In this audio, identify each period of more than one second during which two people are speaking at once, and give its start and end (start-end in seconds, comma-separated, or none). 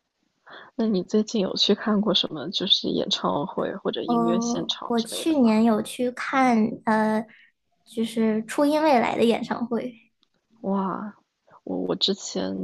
4.0-5.6